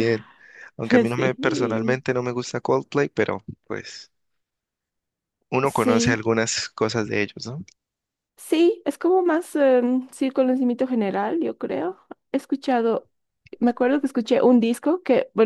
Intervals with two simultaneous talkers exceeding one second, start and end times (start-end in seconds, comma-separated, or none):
0.8-2.0